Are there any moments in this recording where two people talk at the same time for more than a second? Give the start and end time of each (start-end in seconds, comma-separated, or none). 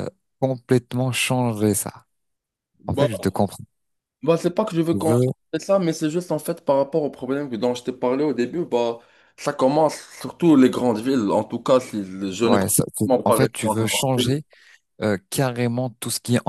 12.4-14.4